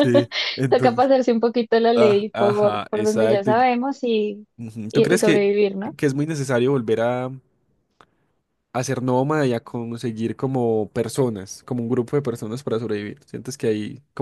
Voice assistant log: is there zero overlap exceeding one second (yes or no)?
no